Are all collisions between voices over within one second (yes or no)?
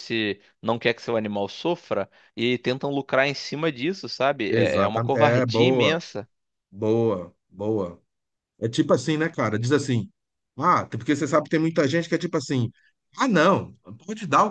no